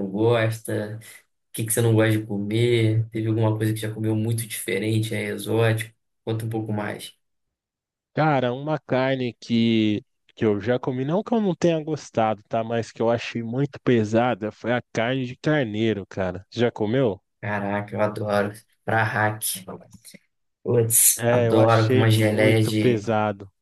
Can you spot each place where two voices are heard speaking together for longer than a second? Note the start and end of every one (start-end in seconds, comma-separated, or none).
21.2-23.0